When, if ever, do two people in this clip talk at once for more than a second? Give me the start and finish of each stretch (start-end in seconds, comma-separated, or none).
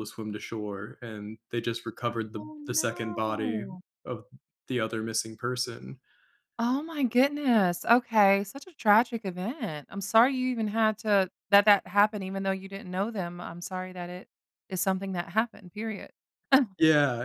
2.4-3.6